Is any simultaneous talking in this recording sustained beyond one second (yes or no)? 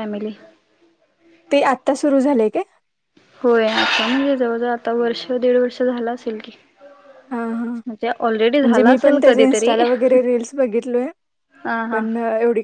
yes